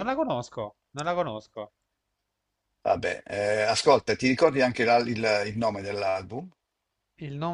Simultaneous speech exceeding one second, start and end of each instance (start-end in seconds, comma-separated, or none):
none